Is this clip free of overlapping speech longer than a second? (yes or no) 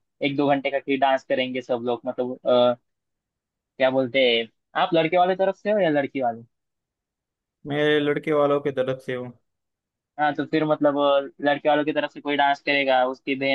yes